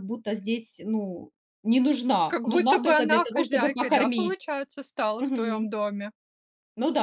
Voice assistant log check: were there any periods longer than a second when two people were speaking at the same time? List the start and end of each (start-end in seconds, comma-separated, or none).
2.2-4.3